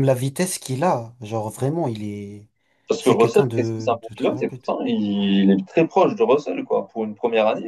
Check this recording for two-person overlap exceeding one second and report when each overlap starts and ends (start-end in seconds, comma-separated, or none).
3.0-4.7